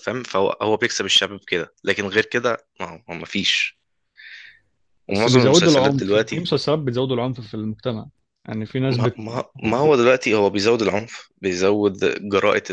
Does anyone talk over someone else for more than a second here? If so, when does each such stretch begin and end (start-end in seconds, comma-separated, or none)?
5.1-6.4